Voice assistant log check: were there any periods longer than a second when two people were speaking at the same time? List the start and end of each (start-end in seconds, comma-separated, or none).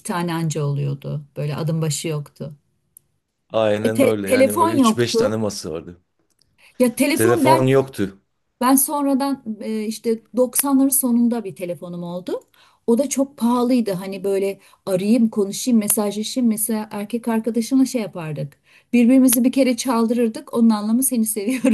3.8-5.4